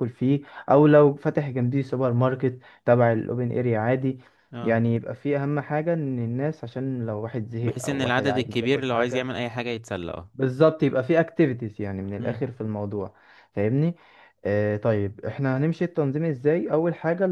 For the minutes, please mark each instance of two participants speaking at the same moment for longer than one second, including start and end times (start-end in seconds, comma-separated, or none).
7.6-9.3